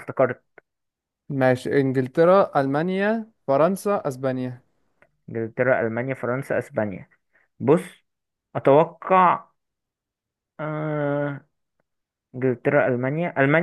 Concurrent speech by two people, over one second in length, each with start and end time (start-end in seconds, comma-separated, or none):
none